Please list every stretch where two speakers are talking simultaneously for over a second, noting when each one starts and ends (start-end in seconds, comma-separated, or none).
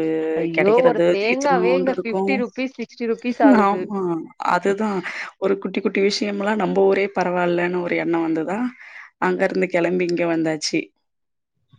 0.6-2.3